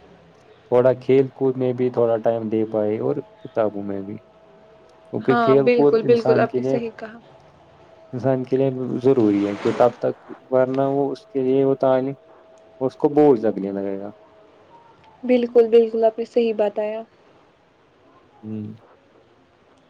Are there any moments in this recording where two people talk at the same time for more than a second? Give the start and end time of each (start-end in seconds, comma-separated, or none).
5.3-6.8